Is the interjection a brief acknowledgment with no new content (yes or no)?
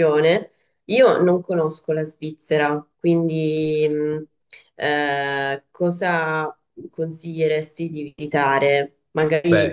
yes